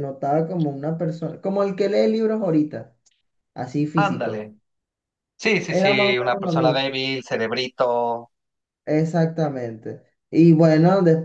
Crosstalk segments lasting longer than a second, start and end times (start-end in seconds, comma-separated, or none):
5.7-7.0